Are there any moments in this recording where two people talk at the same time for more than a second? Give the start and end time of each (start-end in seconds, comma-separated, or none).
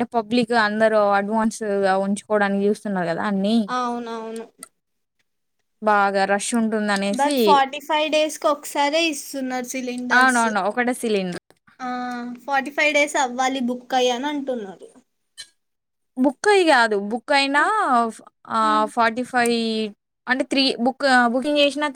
none